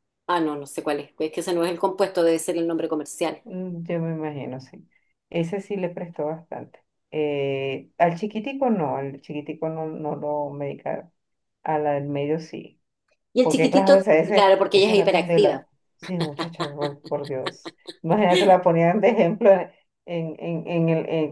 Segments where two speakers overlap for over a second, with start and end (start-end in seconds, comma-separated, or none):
13.4-15.7